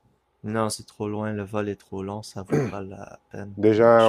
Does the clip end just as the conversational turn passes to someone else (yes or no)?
yes